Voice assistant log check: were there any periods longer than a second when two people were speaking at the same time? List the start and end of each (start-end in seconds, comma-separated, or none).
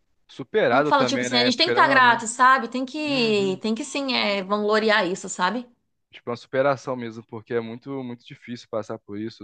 0.7-2.2